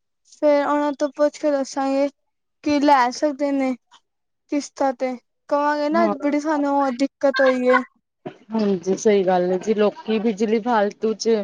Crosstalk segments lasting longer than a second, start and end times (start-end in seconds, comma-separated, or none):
none